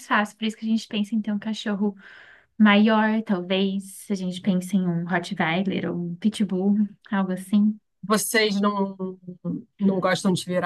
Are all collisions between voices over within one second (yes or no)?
yes